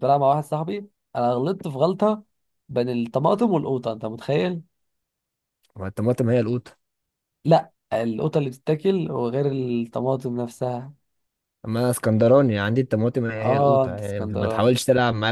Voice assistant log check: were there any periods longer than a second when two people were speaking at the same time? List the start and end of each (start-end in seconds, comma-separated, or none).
13.4-14.7